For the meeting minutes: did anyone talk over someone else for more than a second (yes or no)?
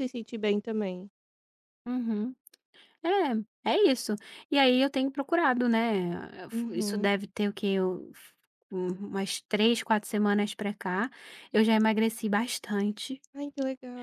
no